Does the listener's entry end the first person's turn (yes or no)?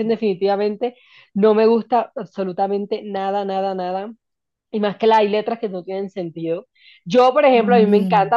no